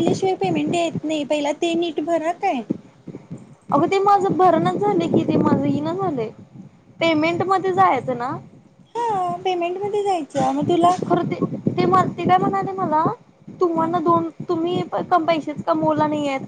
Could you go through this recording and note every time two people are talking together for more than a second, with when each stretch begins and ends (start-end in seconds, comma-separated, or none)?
none